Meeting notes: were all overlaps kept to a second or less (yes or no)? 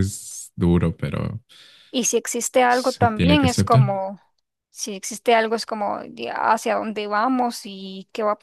no